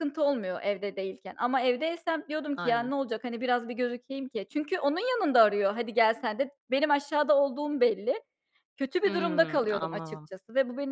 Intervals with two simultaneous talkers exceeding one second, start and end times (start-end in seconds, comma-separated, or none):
9.1-10.3